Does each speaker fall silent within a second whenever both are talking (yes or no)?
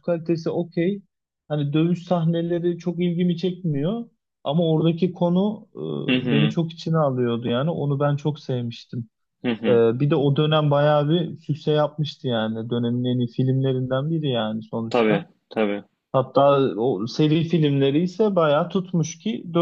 yes